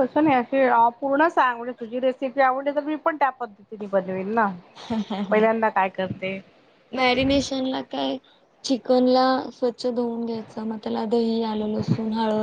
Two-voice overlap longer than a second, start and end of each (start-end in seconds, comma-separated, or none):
none